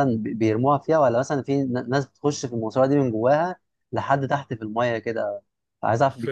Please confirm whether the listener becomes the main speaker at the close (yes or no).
yes